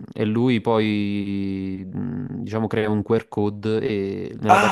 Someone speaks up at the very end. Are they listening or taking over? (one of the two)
taking over